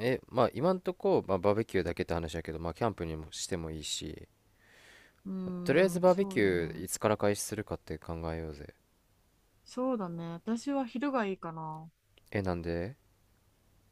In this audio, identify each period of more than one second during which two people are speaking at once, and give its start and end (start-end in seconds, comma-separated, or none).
5.6-6.9